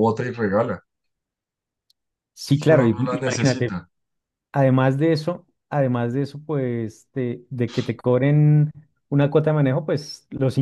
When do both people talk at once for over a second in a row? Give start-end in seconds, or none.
2.6-3.8